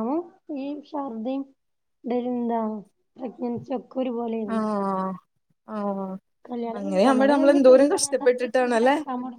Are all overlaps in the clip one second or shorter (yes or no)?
no